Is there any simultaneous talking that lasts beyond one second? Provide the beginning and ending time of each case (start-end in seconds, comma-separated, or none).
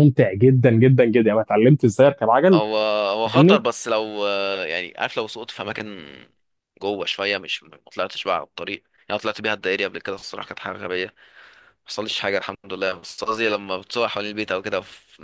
none